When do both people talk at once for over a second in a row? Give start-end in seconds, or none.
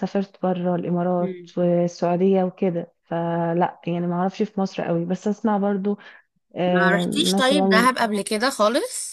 6.7-7.9